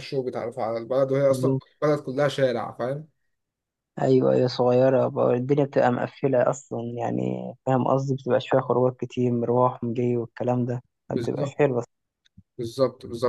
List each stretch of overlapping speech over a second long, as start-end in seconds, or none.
none